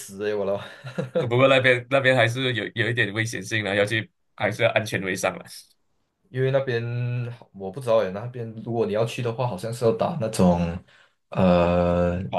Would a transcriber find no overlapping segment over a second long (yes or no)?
yes